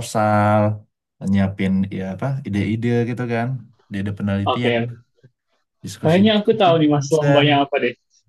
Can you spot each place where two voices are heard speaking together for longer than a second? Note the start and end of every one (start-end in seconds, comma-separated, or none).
6.0-7.6